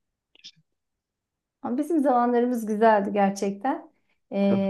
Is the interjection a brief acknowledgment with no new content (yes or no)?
yes